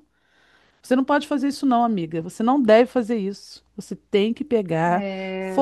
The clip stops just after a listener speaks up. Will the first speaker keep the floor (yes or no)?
yes